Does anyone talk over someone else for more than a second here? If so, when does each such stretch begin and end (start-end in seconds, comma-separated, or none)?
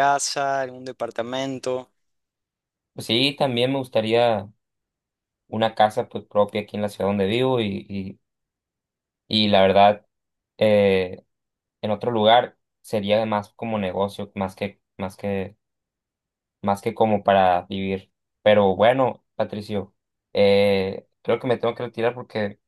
none